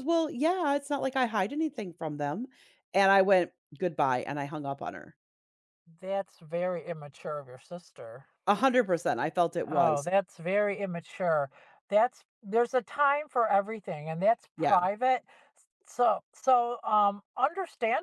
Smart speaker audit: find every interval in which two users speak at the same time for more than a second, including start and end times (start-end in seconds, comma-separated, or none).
none